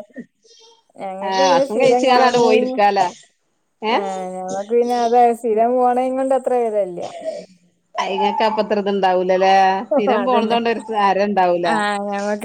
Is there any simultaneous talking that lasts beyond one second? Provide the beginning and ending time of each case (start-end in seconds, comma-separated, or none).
1.3-2.8